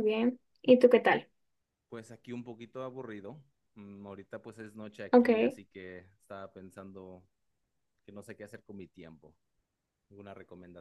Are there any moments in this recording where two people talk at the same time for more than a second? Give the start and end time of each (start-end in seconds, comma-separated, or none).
none